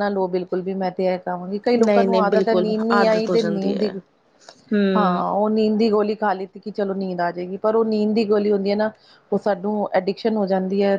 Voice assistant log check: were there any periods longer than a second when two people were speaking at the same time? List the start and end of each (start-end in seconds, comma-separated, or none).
1.9-3.9